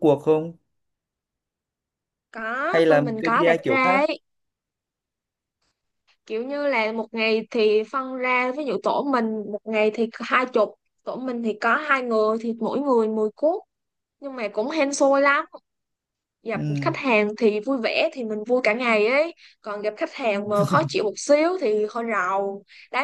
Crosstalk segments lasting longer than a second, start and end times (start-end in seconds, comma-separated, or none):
2.7-4.0